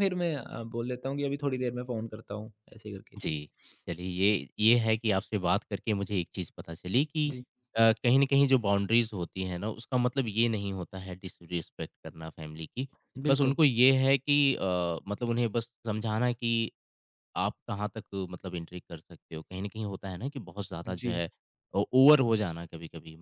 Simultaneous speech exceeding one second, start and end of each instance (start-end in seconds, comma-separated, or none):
none